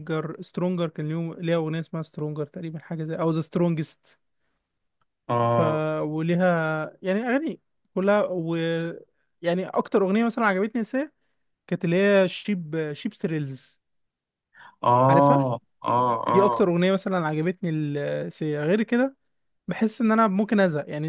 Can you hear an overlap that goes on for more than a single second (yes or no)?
no